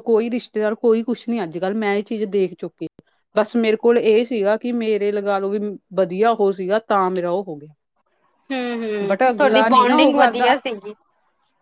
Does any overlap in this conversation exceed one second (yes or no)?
yes